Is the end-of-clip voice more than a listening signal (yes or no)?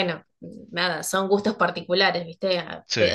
no